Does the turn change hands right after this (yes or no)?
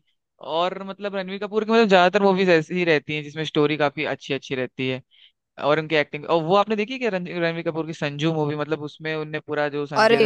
yes